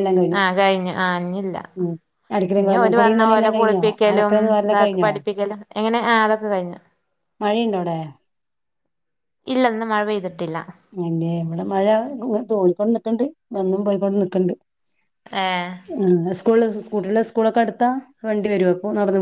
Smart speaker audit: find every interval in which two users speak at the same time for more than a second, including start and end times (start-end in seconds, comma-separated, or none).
2.6-5.1